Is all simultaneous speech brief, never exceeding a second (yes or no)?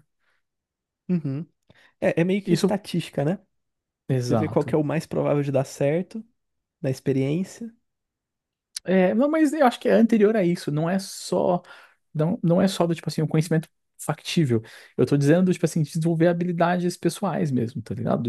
yes